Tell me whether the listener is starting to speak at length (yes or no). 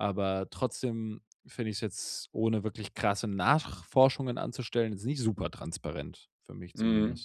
yes